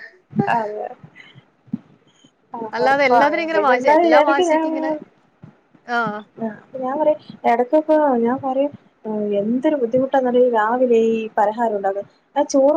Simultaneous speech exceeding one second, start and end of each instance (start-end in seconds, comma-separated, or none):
2.8-4.7